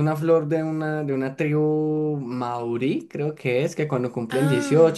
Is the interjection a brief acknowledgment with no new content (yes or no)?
yes